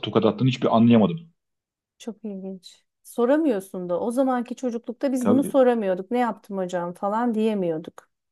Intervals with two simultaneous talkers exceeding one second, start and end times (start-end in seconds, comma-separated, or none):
none